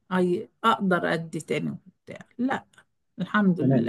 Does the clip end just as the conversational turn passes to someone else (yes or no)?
yes